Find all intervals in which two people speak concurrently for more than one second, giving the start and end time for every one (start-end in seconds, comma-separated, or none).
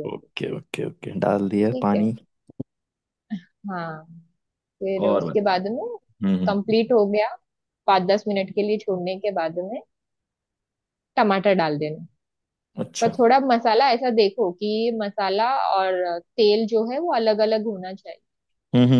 none